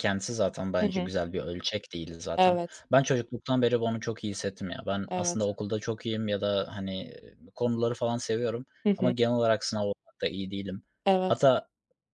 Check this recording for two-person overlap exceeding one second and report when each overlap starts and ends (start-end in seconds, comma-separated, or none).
none